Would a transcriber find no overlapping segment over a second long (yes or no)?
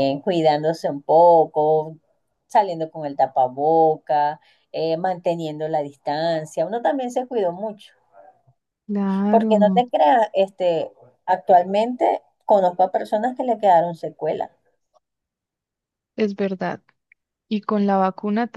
yes